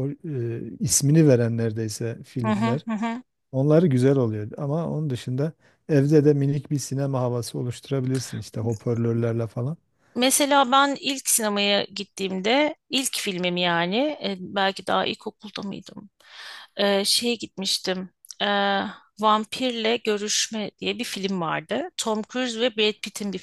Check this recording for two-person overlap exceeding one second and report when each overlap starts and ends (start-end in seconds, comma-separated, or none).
none